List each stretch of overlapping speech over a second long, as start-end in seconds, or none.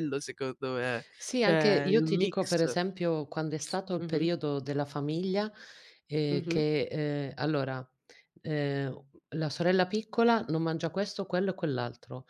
1.2-2.6